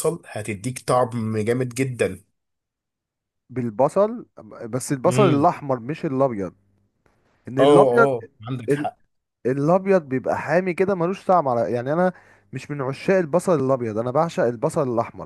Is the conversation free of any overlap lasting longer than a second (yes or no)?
yes